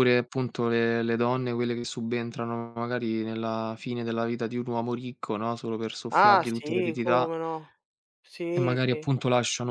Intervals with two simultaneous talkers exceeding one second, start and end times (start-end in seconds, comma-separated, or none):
6.1-7.3